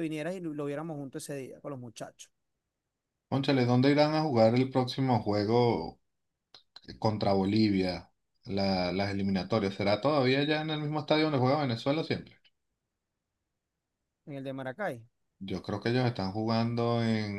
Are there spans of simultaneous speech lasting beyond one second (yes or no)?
no